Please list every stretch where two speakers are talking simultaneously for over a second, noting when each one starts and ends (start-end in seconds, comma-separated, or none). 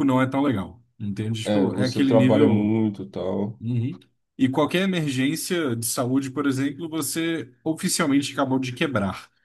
1.4-2.7